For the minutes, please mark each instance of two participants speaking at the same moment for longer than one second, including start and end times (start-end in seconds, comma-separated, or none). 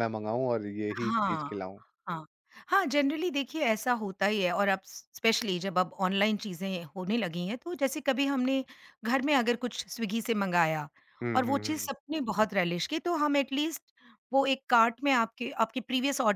none